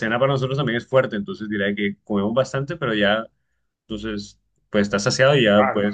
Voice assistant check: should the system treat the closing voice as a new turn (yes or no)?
yes